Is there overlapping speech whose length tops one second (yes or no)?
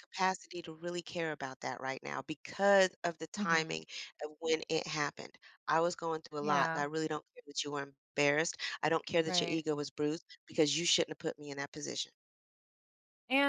no